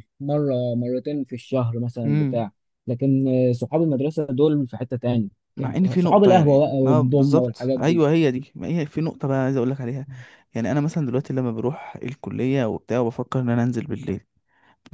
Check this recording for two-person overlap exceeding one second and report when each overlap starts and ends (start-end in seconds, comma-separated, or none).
5.9-8.0